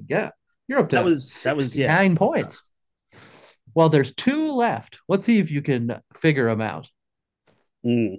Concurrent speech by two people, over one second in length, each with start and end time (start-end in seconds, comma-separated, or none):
0.9-2.5